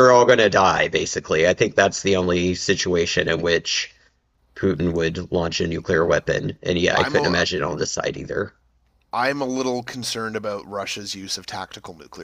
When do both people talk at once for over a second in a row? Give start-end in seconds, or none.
none